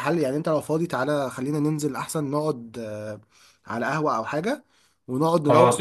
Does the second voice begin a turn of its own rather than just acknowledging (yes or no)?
no